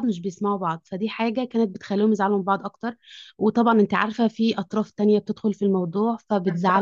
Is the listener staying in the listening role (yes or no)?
no